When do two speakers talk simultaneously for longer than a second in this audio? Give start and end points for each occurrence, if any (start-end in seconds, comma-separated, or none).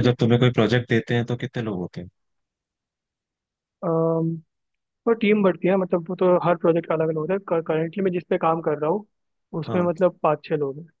none